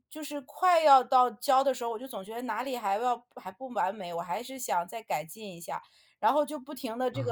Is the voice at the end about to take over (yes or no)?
no